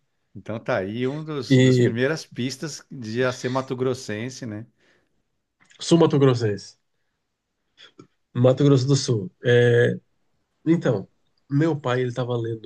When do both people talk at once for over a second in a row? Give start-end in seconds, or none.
none